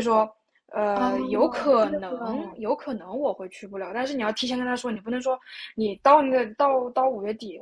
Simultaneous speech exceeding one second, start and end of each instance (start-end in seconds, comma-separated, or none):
0.9-2.6